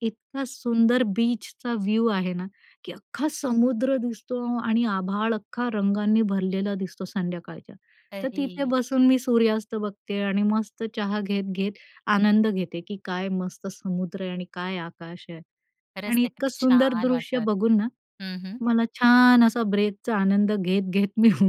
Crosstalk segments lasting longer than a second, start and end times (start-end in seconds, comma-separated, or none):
16.1-17.9